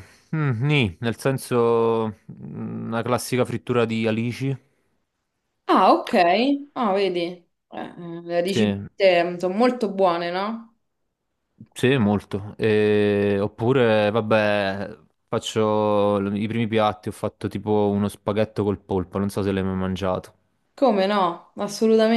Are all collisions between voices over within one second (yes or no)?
yes